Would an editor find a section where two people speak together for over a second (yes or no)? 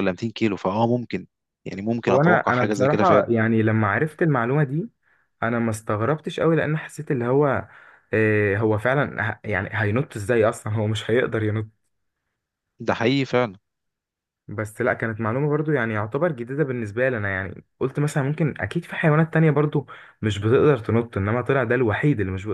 yes